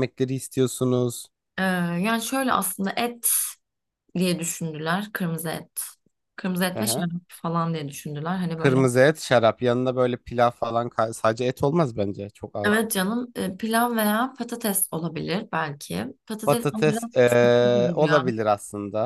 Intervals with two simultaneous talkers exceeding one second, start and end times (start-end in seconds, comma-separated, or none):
16.4-18.2